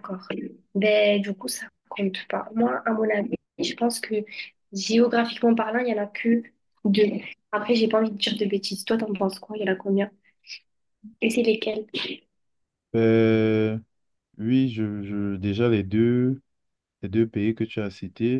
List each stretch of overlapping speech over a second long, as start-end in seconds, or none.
none